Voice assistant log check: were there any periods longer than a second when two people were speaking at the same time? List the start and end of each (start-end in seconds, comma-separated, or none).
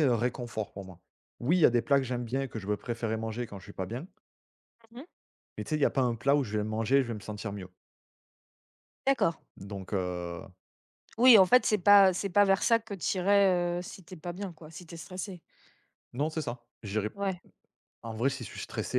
none